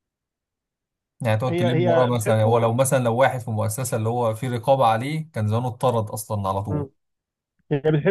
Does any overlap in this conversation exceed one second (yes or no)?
yes